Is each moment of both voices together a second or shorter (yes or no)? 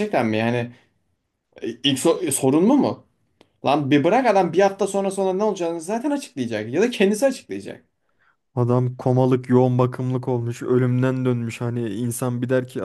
yes